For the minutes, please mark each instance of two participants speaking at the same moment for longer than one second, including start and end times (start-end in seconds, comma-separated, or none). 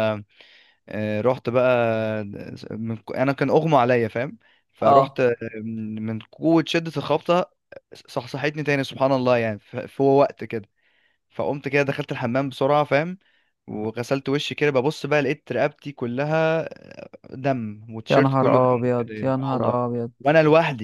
18.1-19.8